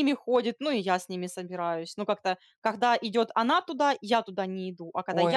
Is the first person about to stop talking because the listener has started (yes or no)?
yes